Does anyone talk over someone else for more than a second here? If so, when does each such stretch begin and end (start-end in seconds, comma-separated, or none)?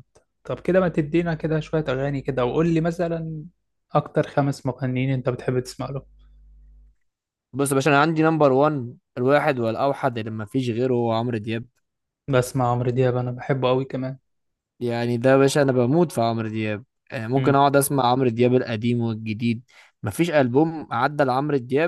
none